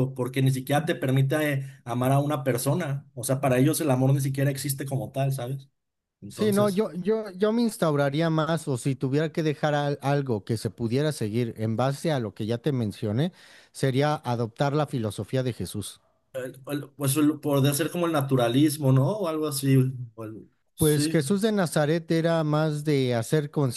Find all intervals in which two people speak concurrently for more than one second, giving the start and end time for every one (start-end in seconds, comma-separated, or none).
none